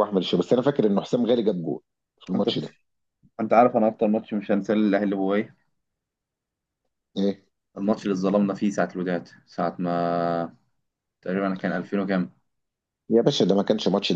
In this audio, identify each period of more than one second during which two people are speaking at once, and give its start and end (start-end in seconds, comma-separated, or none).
none